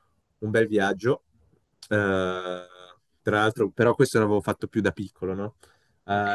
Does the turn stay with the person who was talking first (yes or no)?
yes